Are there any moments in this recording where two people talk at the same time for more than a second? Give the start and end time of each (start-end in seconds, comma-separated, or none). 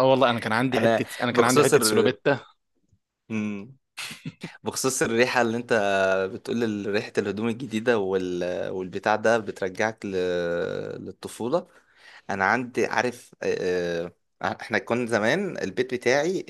0.7-2.2